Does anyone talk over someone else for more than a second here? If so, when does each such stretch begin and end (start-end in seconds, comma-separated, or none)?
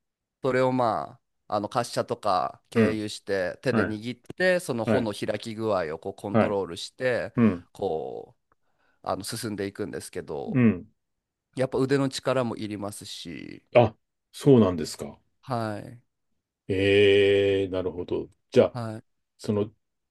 none